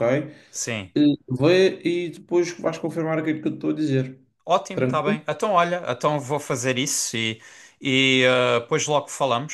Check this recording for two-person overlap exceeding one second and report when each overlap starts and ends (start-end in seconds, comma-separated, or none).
none